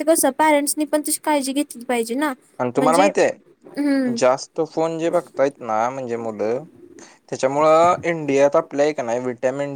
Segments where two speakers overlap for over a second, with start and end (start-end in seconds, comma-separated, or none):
none